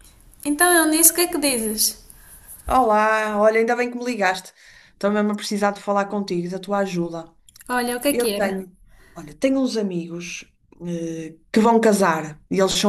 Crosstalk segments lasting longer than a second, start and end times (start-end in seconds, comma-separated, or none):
none